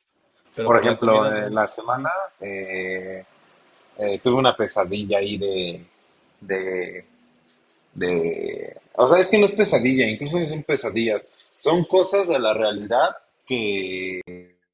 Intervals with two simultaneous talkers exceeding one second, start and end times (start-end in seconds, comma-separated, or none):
0.6-2.1